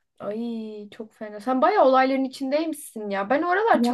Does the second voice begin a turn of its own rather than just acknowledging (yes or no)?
no